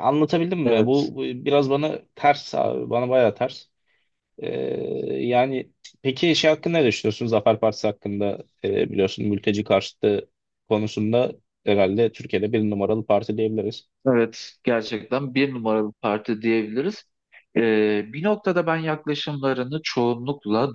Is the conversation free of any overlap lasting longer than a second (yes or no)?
yes